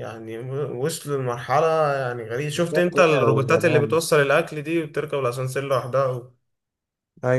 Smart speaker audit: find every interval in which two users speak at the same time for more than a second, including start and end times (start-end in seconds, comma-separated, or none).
2.5-4.0